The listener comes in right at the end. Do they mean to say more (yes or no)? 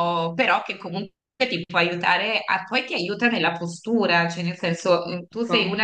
no